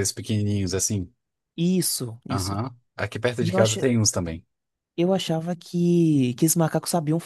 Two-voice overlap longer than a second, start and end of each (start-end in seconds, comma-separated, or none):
none